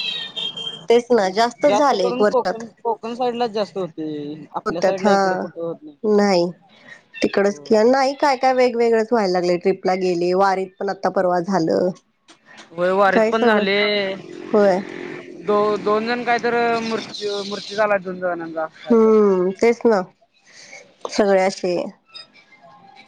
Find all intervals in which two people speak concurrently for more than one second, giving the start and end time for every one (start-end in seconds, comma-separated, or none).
none